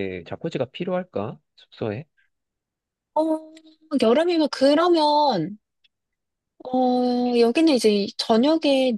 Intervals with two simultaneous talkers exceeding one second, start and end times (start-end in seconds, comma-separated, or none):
none